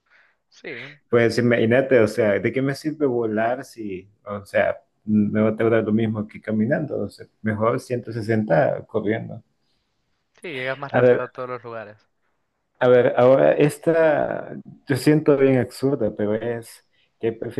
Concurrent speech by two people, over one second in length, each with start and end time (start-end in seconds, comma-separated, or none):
none